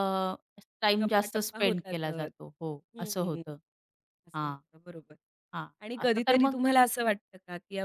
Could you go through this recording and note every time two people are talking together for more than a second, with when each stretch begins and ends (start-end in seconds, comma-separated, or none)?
1.0-2.3